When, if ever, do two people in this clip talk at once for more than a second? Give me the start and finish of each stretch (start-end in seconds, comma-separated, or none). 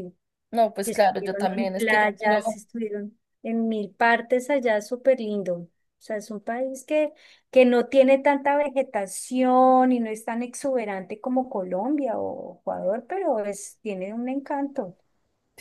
0.8-2.4